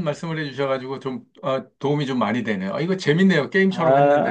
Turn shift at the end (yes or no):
yes